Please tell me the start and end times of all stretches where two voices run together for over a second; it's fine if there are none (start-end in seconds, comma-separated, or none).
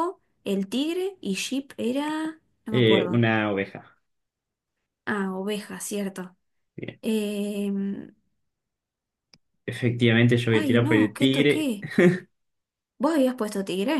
10.5-11.7